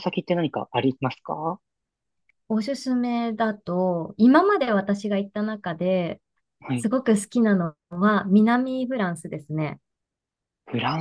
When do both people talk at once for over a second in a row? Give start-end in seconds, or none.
none